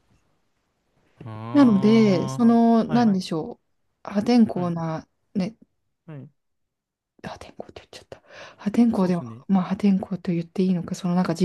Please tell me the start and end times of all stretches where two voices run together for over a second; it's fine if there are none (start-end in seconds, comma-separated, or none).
1.5-3.1